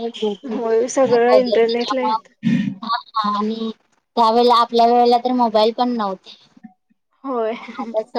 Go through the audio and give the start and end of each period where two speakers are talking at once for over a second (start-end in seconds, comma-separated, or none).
0.5-2.1